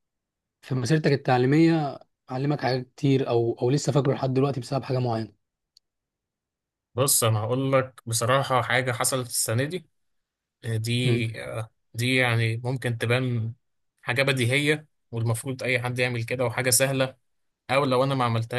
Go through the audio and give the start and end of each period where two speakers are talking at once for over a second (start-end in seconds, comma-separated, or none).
none